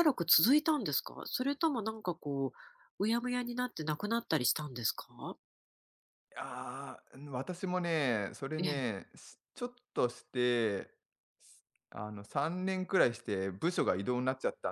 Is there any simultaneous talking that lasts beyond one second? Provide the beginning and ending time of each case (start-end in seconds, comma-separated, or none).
none